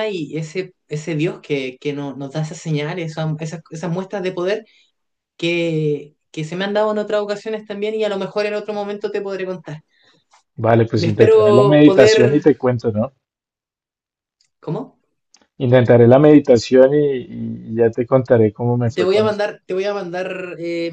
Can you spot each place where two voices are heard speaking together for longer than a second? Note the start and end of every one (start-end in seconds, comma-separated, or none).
10.9-12.5